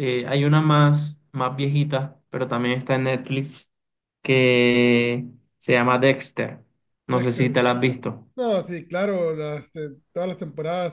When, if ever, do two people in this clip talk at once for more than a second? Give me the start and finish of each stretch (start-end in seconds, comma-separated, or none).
none